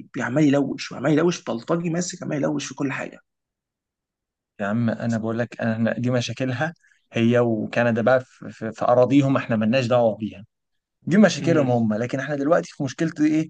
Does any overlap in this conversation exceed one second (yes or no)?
no